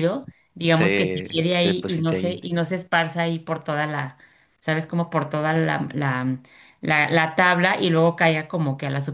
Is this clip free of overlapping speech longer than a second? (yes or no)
no